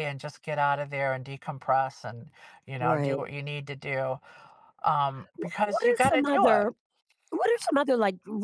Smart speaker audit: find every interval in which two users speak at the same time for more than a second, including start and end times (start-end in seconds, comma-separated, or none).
5.4-6.7